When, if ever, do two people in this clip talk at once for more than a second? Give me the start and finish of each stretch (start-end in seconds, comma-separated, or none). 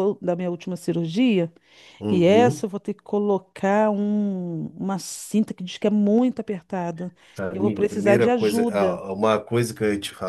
7.5-9.0